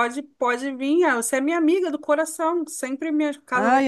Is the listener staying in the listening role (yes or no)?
no